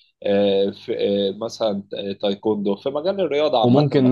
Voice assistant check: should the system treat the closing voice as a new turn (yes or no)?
yes